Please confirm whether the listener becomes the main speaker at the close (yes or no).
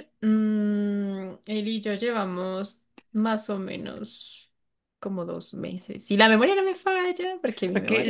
yes